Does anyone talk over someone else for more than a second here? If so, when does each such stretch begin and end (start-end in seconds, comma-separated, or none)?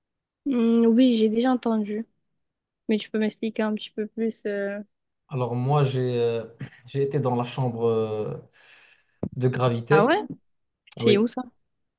none